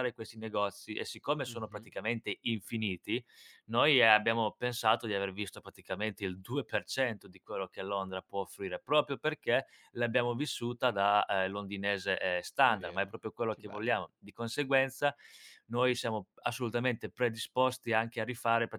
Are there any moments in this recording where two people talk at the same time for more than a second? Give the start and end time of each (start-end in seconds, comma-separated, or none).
12.6-14.1